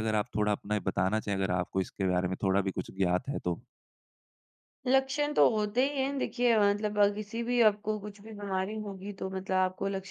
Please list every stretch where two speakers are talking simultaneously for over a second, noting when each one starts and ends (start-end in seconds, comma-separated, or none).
none